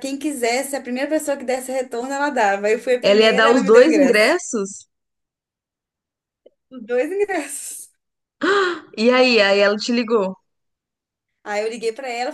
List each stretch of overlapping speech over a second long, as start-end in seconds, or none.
3.0-4.4